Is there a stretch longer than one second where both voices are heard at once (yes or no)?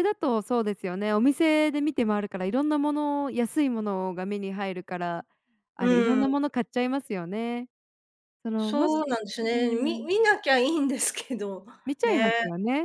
yes